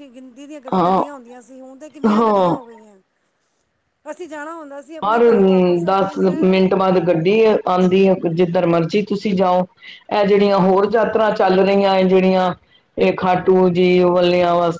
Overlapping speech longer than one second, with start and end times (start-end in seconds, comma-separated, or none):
none